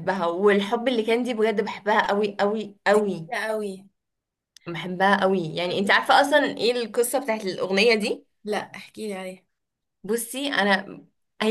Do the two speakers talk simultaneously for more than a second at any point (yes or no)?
no